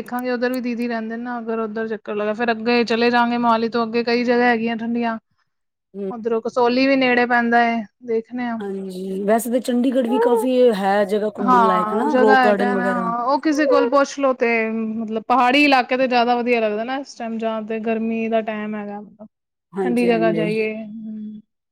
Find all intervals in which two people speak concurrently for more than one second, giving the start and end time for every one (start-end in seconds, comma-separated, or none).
11.5-13.1